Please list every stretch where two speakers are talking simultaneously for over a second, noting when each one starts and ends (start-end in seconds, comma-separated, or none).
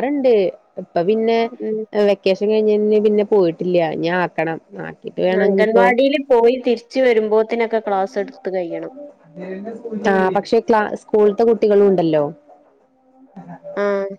none